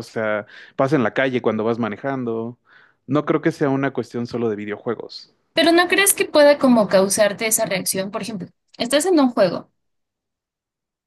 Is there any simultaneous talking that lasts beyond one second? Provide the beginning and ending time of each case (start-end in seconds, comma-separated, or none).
none